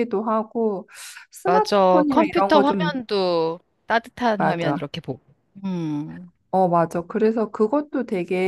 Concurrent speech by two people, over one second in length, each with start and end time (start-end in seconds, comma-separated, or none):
1.4-2.9